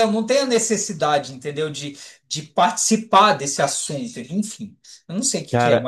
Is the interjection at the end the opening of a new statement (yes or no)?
yes